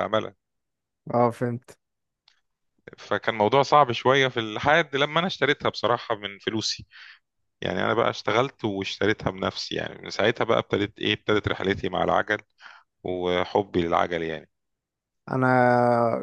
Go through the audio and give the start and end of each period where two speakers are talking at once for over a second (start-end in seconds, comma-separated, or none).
none